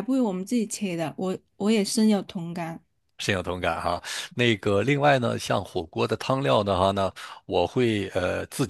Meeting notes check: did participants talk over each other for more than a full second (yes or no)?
no